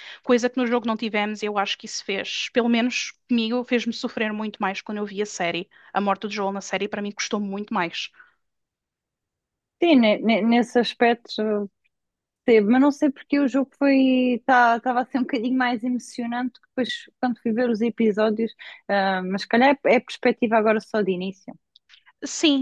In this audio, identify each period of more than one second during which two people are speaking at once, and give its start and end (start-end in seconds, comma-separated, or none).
none